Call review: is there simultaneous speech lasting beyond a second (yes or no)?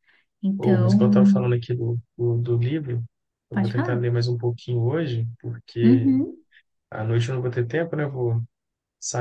no